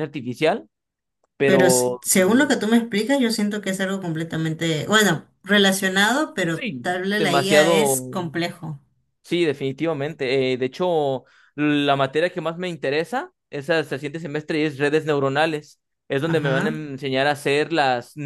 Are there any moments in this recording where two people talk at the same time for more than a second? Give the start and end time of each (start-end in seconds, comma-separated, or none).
6.5-8.0